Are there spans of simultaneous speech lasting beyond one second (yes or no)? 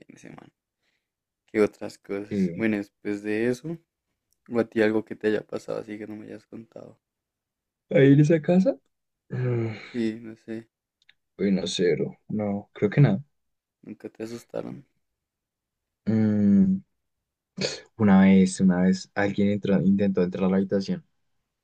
no